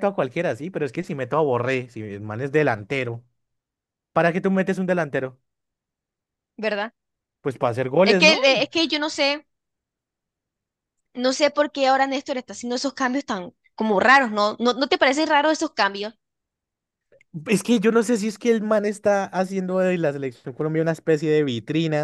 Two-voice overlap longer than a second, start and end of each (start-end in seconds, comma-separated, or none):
none